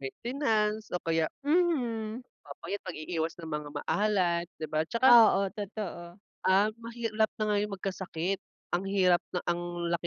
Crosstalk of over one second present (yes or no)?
no